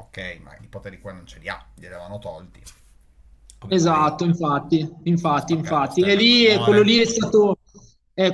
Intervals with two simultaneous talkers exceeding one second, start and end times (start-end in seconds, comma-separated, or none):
5.1-7.4